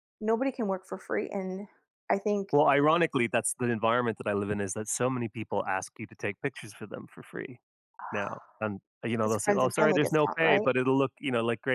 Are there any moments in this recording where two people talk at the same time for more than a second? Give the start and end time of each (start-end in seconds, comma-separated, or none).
9.2-10.7